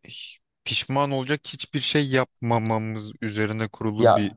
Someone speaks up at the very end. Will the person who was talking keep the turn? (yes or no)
no